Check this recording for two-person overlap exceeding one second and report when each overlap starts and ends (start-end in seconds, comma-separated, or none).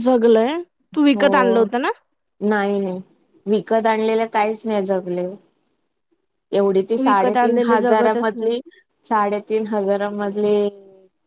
7.0-8.5